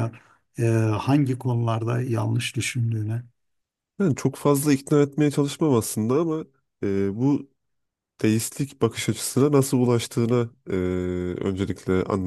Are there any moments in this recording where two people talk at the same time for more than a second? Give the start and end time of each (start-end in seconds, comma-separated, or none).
none